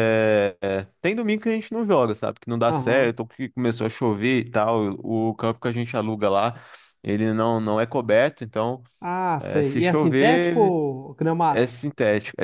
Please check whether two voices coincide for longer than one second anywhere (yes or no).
yes